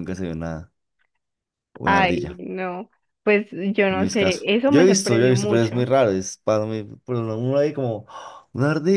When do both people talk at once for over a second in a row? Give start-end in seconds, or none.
3.9-5.9